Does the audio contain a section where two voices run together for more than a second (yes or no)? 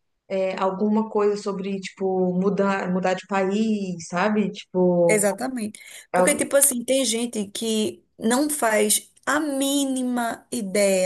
no